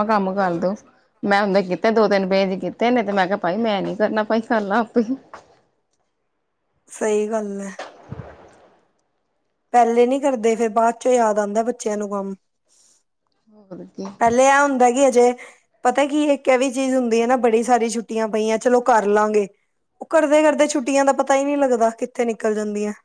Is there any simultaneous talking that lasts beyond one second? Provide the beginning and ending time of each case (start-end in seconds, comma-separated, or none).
none